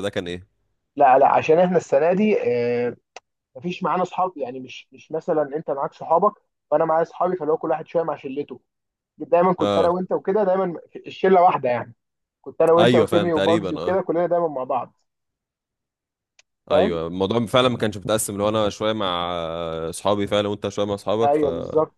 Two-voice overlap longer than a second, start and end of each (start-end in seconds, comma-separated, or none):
12.8-14.0